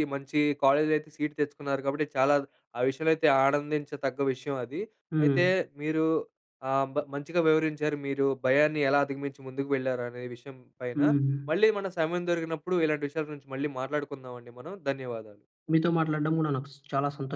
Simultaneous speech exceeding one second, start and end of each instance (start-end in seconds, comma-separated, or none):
none